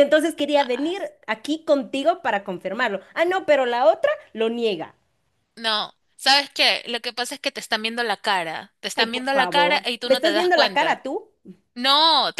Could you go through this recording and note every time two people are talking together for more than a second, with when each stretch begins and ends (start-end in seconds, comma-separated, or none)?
8.9-11.0